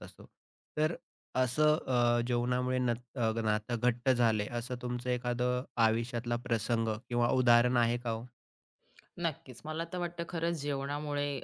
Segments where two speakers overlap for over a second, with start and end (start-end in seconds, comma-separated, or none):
none